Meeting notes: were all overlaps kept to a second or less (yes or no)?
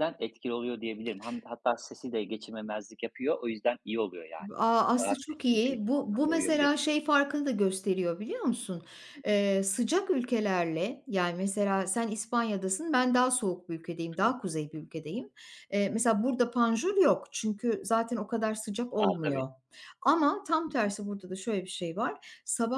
no